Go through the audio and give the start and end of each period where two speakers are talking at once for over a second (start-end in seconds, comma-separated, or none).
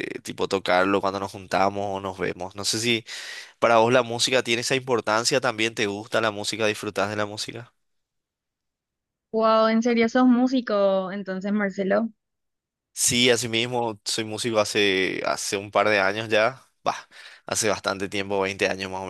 none